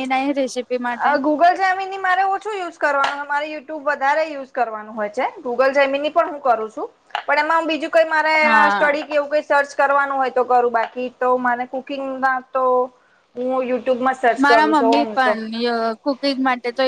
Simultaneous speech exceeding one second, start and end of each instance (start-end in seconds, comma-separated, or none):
none